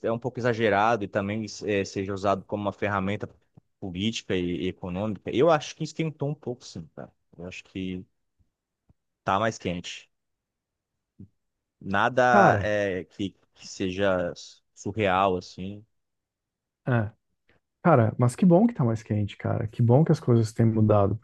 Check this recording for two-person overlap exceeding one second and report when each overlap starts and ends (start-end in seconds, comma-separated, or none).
none